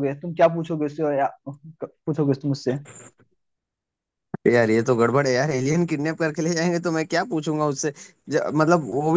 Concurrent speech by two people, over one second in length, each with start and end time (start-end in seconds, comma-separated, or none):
none